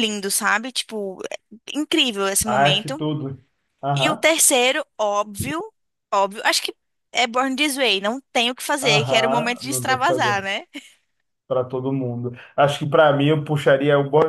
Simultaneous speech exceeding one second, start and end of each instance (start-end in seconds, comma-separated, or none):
8.8-10.4